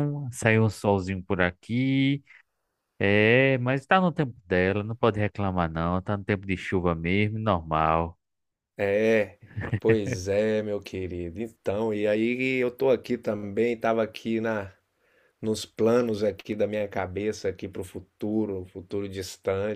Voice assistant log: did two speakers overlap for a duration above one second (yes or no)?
no